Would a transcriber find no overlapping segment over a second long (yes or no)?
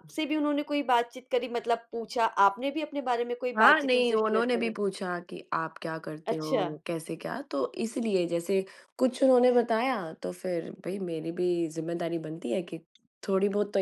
no